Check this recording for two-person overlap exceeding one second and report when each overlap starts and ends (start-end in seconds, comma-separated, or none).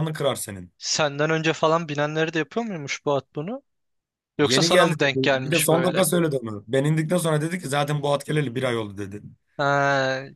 4.4-6.0